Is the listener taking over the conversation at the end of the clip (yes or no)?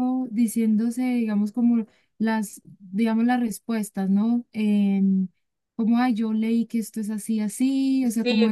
yes